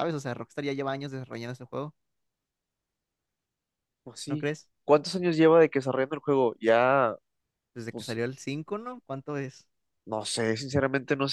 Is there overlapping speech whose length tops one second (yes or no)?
no